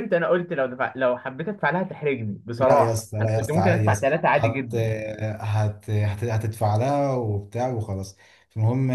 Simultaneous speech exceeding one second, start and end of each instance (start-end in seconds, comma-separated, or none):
2.6-4.7